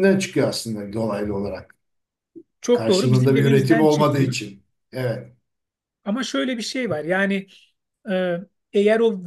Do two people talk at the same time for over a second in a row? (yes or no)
yes